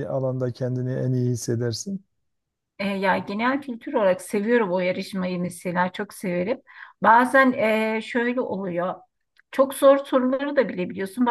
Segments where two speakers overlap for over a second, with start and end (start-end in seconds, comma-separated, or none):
none